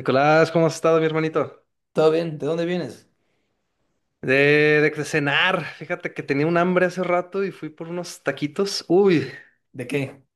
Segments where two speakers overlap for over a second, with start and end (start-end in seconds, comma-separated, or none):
none